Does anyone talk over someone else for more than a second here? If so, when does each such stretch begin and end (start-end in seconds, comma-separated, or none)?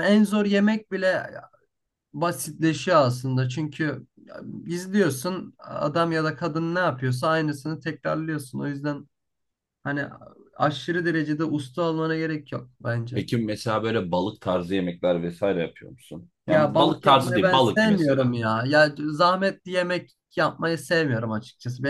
16.5-18.3